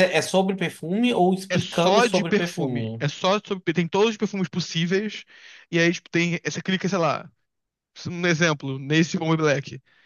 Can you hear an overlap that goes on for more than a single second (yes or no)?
yes